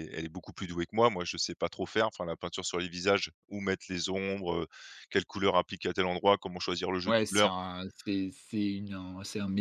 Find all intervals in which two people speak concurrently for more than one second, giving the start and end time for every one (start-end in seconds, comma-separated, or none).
none